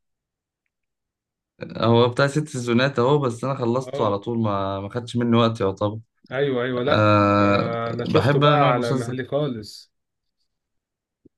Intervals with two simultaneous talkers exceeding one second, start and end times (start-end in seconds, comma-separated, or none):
6.8-9.2